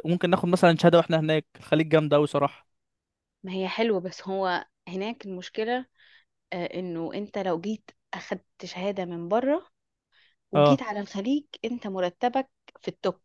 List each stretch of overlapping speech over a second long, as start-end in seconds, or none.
none